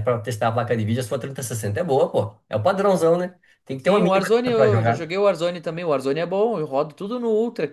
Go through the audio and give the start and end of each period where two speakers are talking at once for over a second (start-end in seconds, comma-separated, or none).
3.8-5.1